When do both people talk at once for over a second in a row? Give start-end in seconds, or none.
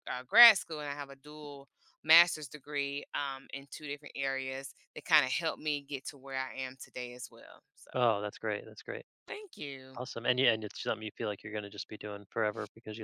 none